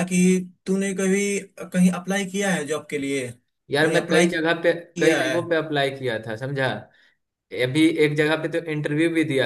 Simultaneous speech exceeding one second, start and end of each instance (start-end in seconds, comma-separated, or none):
none